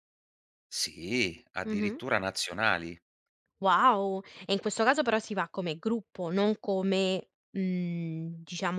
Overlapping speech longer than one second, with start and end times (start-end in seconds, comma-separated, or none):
none